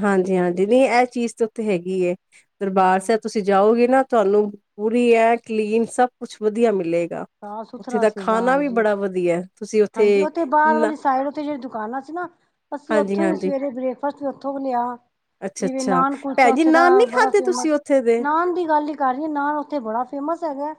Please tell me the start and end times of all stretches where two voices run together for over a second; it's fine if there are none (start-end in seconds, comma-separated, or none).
15.6-17.7